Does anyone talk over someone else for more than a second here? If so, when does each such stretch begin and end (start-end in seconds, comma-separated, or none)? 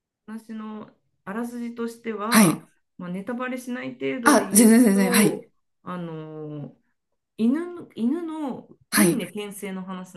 4.2-5.5